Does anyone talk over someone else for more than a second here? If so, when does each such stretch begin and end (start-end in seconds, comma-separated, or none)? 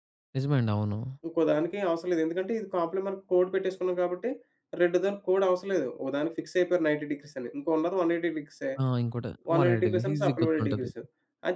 9.5-10.9